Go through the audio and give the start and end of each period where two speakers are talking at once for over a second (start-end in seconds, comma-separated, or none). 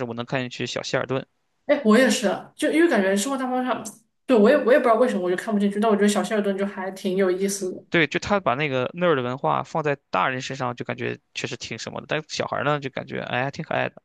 none